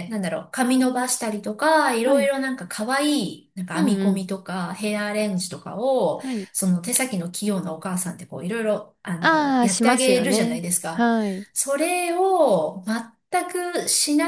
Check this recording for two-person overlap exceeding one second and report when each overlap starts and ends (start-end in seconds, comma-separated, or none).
9.2-11.1